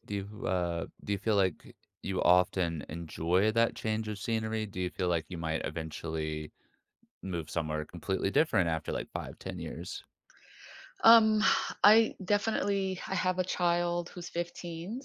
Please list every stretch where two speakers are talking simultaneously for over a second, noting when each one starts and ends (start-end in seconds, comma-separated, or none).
none